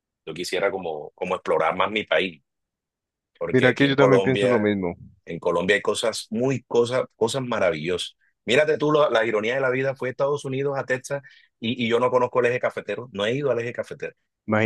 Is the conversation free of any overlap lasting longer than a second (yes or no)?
no